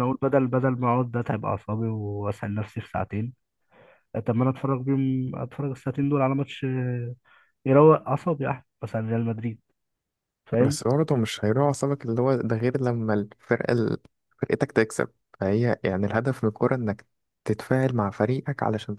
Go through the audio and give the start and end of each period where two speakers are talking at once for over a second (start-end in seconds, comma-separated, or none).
none